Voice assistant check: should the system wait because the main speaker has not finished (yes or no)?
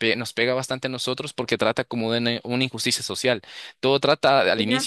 yes